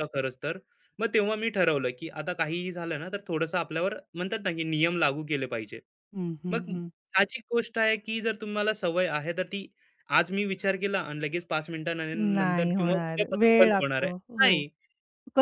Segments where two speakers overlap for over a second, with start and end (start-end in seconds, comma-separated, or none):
12.3-14.6